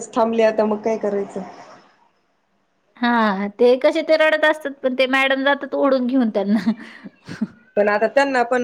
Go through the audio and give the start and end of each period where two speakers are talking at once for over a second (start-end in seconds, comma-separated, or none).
none